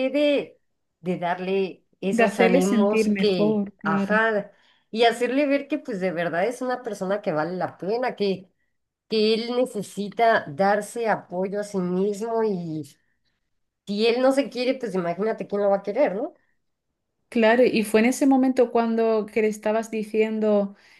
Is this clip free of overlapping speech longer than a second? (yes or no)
no